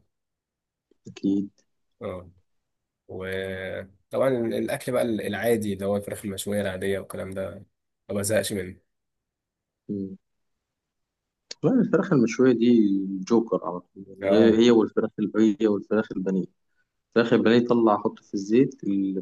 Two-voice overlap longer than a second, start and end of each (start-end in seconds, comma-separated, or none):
none